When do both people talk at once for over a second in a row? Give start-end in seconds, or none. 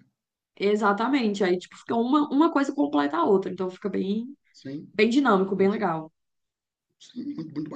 none